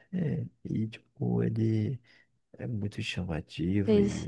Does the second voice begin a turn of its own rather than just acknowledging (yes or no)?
no